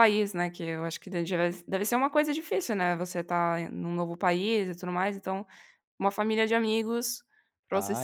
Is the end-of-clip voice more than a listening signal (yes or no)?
yes